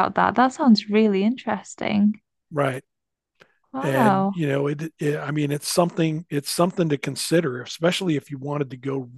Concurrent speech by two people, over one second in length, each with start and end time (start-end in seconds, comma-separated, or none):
none